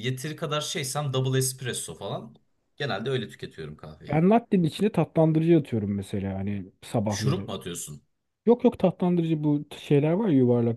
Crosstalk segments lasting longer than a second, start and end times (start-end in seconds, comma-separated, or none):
none